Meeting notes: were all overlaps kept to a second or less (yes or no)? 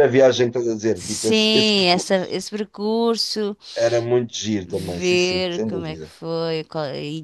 no